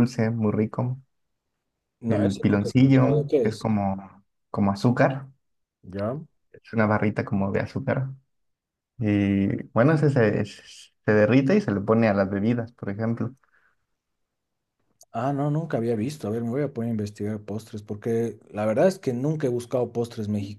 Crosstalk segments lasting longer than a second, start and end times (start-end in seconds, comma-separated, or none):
2.1-3.6